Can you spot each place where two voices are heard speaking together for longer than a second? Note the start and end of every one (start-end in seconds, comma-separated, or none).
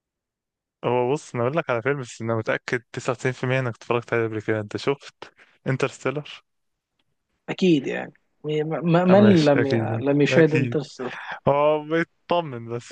9.1-10.8